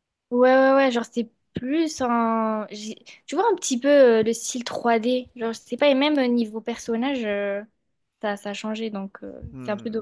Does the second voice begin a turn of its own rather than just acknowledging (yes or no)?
yes